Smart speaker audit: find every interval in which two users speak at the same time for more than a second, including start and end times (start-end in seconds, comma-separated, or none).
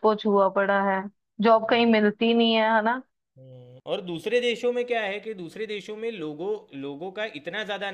none